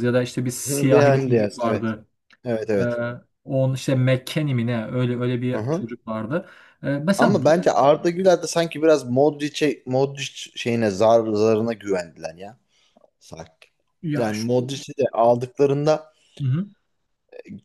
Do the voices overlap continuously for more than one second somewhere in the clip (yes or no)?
yes